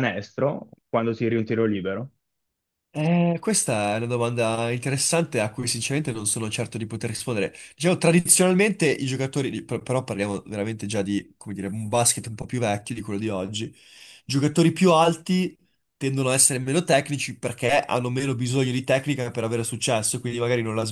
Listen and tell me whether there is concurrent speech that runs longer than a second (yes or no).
no